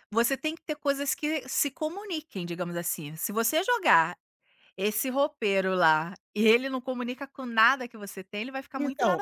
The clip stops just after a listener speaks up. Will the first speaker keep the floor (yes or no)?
no